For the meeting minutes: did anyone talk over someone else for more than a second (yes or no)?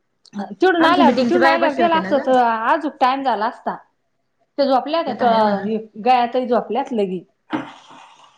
yes